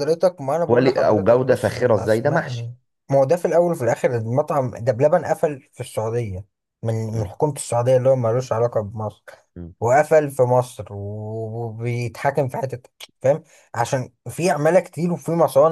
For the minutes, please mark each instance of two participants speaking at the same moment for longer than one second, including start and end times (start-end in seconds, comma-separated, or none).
0.7-2.7